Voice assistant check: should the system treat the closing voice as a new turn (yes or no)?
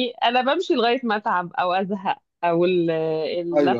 no